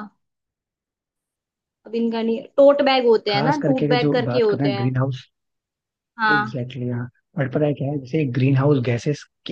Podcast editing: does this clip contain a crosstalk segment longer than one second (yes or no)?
yes